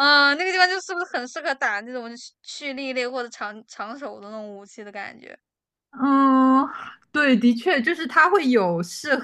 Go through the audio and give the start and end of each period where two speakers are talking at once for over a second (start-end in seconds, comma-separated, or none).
none